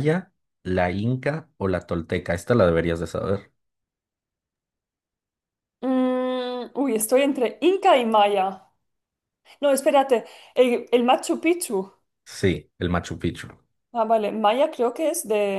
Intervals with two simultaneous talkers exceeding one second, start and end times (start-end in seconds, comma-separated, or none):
none